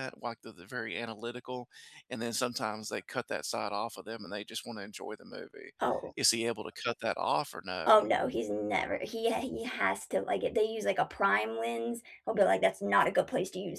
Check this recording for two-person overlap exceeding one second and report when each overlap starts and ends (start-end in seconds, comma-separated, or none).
none